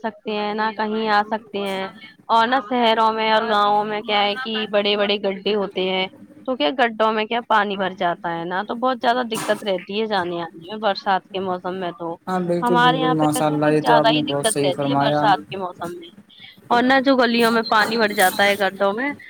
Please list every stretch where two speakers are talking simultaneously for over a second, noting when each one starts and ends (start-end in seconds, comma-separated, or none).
12.6-15.3